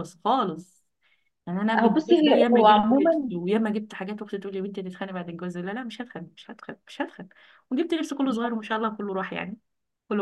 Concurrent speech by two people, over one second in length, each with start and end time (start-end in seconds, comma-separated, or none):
1.8-3.3